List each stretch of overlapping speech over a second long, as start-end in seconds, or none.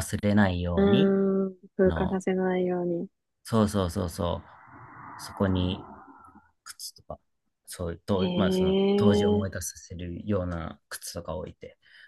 8.2-9.6